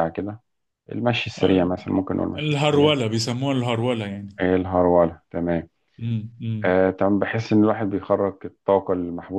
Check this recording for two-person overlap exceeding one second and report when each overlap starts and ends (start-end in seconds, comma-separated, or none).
none